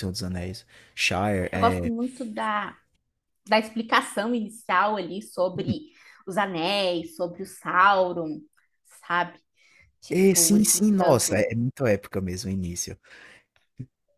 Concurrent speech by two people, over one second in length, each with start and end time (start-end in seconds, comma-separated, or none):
10.1-11.5